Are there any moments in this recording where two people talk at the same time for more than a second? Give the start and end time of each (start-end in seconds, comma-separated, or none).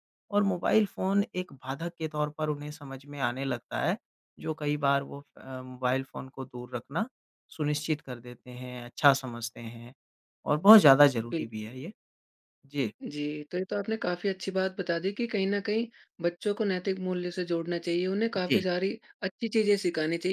none